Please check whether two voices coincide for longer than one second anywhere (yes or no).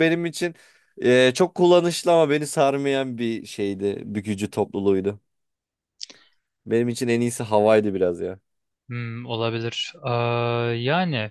no